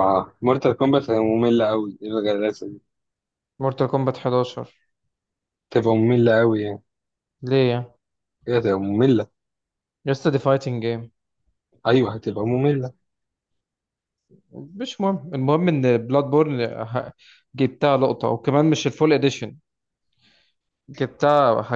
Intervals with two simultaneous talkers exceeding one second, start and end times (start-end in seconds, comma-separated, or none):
none